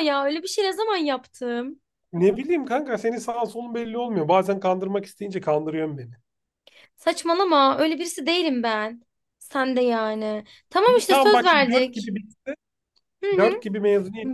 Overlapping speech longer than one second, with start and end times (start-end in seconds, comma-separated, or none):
10.8-12.1